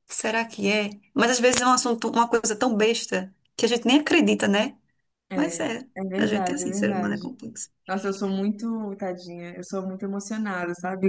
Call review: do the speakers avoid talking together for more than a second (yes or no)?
no